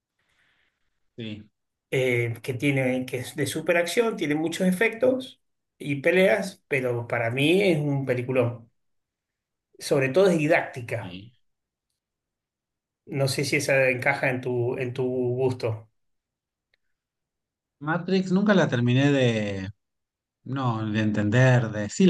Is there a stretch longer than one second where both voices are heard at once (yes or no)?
no